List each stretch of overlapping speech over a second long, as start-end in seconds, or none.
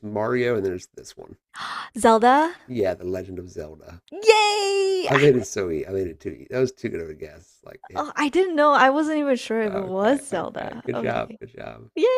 9.6-11.4